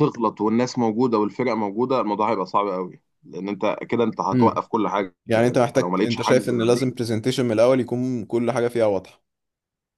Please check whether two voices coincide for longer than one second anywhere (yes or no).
yes